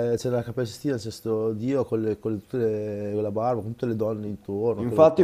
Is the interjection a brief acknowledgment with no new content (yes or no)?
no